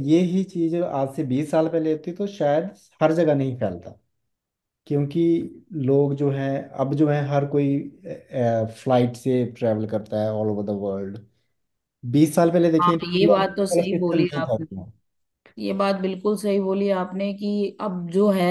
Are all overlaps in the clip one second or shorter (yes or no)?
no